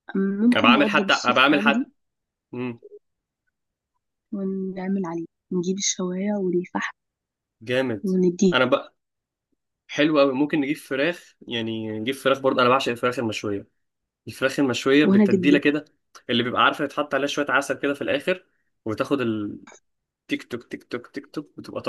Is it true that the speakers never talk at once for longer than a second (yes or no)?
no